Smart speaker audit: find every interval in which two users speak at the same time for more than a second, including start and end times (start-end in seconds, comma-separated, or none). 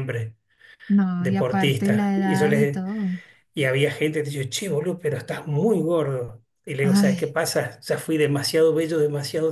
1.2-2.8